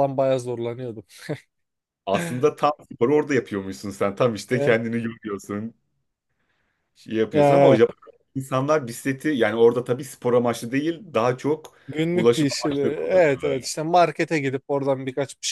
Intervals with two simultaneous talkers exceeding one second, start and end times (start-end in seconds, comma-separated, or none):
12.1-13.7